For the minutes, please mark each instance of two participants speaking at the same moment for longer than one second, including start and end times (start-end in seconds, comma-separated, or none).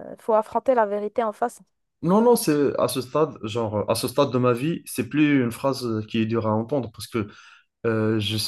none